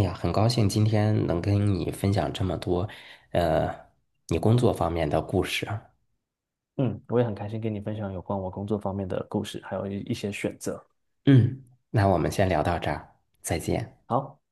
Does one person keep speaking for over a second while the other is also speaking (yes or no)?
no